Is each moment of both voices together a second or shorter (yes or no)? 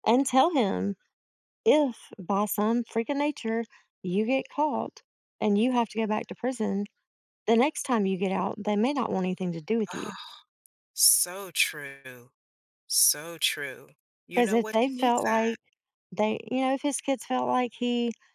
no